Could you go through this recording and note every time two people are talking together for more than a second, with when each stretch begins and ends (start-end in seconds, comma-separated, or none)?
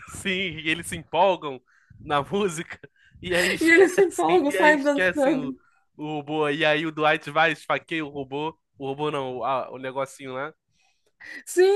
3.6-5.5